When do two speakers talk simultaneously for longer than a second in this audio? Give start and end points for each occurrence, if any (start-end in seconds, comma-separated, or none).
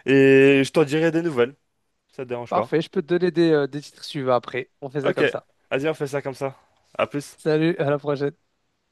none